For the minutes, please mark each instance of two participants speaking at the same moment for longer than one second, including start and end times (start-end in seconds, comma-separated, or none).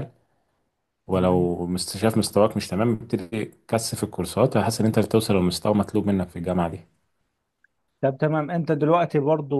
none